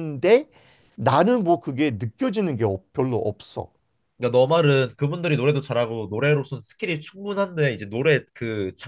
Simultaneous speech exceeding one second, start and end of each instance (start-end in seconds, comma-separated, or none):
none